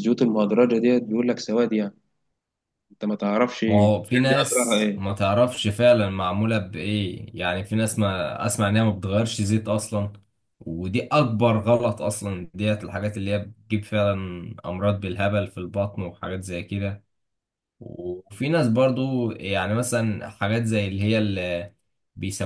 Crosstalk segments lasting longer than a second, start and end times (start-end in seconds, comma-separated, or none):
3.7-5.0